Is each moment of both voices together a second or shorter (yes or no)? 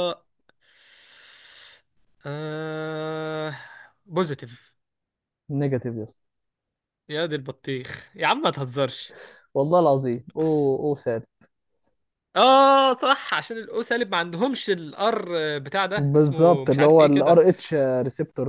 no